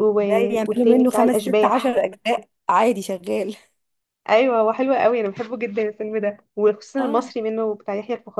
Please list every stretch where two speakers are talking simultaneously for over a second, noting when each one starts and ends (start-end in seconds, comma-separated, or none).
0.7-2.0